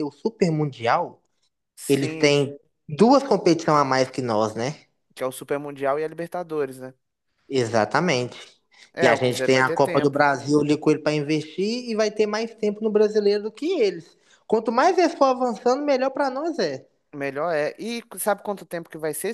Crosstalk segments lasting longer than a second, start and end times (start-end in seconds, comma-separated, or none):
9.0-10.2